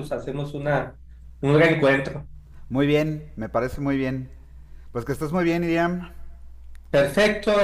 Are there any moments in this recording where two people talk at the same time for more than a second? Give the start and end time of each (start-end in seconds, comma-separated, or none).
none